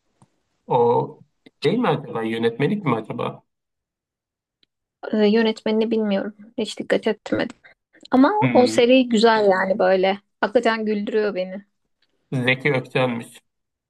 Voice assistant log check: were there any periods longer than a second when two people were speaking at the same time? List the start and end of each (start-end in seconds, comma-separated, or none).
none